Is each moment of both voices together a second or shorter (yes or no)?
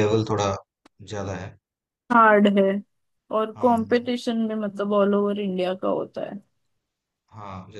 yes